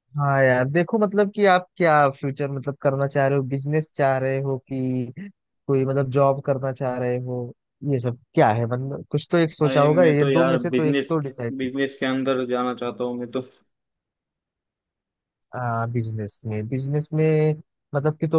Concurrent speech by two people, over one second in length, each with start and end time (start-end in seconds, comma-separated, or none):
9.7-11.1